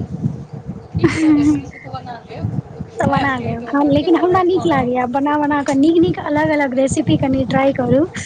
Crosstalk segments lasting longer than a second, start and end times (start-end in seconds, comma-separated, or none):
3.0-4.8